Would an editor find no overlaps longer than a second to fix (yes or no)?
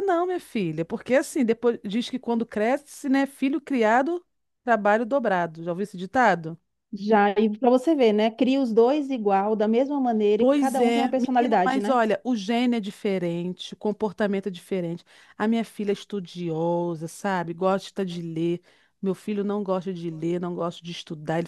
no